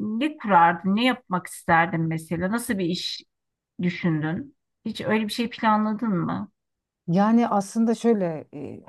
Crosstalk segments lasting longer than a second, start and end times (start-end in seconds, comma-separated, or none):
none